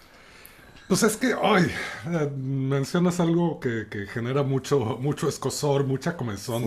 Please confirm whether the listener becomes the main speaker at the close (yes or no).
no